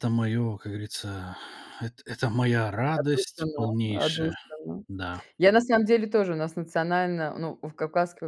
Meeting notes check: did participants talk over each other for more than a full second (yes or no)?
yes